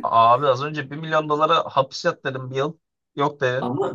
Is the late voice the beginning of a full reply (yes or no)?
yes